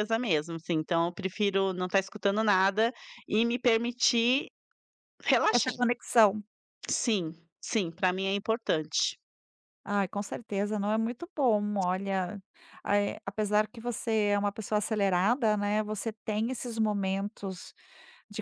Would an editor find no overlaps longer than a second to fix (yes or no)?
yes